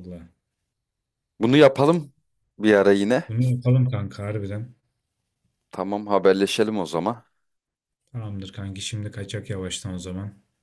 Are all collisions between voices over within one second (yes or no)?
yes